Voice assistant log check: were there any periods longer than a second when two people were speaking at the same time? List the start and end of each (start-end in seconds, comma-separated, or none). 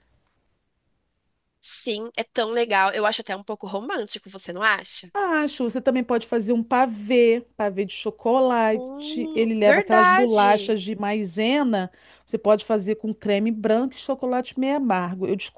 8.7-10.8